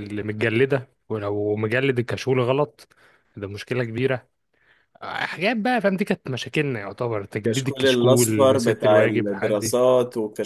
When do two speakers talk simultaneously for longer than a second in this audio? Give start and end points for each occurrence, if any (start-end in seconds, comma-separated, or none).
7.4-9.7